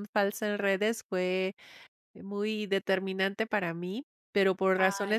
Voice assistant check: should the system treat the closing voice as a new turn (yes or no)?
no